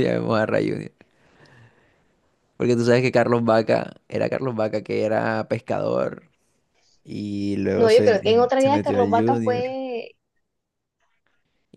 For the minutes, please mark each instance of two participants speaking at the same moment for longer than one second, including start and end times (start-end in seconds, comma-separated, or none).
7.8-9.8